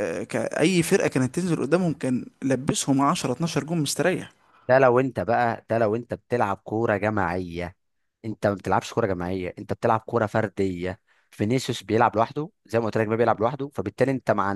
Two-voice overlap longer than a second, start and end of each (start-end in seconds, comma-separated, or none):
none